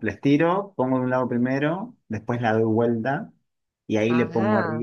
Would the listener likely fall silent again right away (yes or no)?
yes